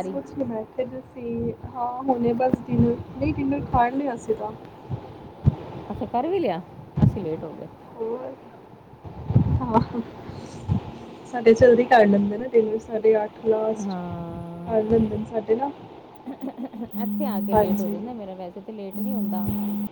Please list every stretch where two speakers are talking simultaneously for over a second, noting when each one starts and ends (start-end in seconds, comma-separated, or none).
none